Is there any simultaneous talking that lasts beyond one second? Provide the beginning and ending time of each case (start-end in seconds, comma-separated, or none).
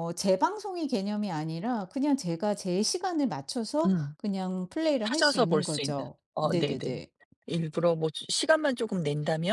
5.0-6.9